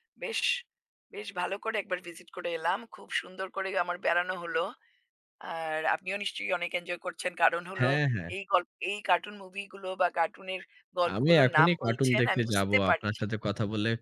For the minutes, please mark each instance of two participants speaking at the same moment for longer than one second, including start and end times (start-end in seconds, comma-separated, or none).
11.1-13.2